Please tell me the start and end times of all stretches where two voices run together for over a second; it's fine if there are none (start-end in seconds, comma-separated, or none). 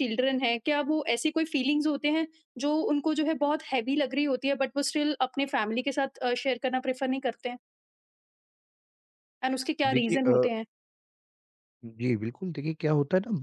none